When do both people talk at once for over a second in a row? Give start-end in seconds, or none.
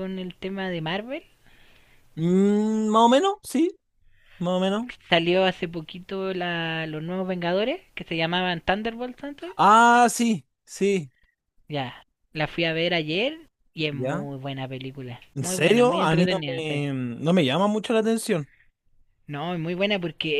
15.3-16.8